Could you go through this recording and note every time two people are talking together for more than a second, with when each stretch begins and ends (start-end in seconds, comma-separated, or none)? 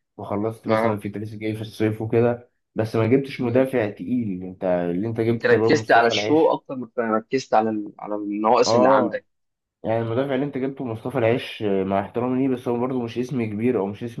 5.3-6.6